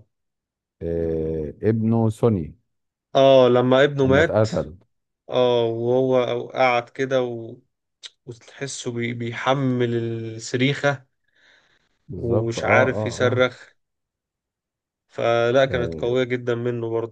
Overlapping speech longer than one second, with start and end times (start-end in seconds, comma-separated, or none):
12.1-13.5